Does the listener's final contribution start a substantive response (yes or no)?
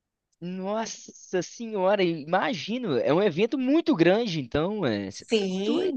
yes